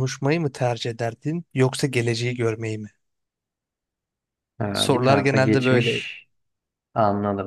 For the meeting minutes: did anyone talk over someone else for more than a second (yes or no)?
yes